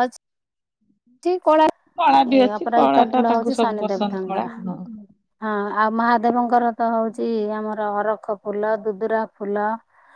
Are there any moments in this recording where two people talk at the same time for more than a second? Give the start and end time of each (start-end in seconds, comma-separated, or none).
2.3-4.5